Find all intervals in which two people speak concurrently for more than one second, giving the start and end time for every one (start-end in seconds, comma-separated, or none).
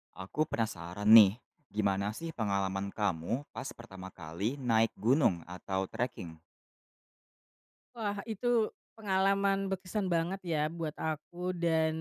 none